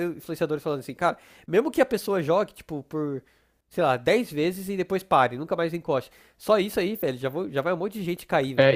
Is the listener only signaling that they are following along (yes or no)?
no